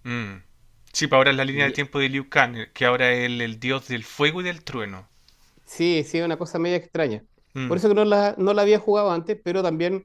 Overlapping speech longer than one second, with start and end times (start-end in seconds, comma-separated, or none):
none